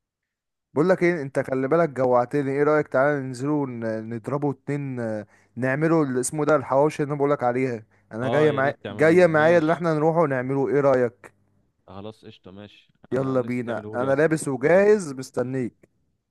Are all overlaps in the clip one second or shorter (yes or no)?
no